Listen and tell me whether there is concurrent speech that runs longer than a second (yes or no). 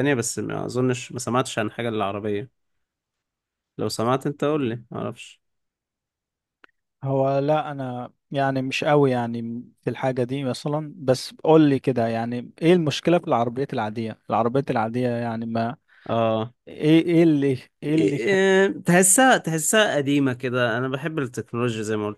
no